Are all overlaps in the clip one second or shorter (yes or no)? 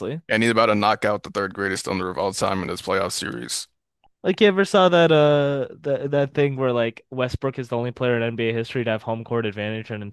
yes